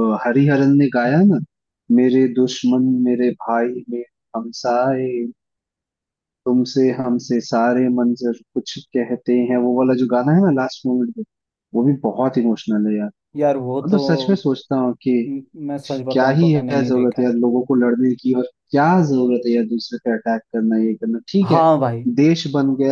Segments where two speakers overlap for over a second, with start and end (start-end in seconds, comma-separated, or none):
16.1-17.3